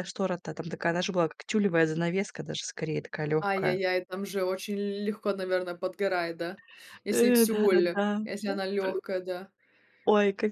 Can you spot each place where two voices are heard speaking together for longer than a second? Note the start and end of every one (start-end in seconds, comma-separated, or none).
7.1-9.0